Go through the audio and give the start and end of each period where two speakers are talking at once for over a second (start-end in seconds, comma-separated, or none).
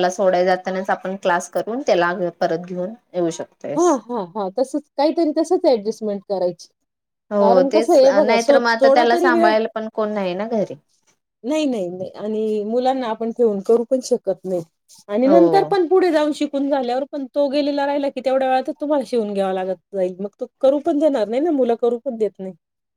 7.4-9.5